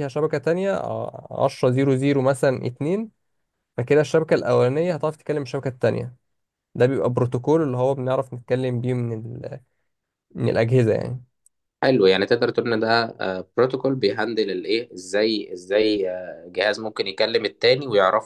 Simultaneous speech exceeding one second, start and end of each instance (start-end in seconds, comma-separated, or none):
none